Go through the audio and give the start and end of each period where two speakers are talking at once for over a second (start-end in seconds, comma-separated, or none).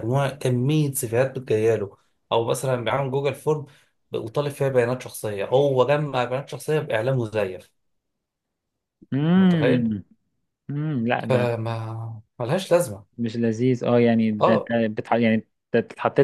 none